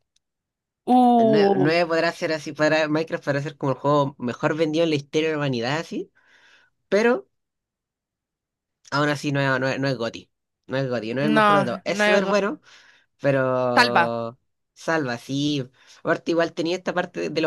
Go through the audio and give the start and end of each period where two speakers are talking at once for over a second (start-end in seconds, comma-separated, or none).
11.2-12.4